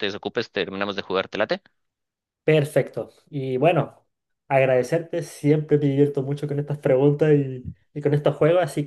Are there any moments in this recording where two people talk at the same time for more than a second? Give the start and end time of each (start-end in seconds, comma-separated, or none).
none